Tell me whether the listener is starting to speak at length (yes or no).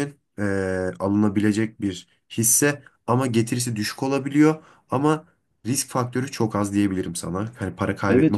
yes